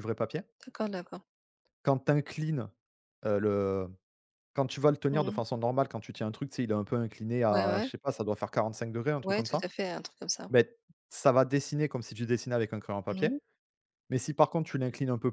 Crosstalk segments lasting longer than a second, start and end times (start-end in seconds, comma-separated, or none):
none